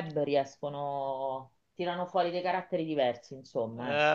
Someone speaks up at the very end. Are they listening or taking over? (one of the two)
taking over